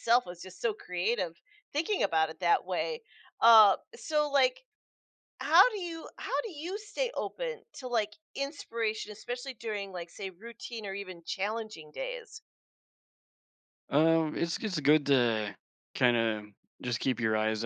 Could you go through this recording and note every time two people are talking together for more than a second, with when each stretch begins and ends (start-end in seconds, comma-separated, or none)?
none